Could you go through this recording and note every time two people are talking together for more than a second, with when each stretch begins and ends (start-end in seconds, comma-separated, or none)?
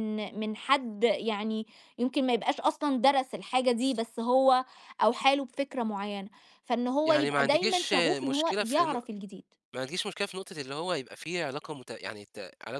7.1-8.9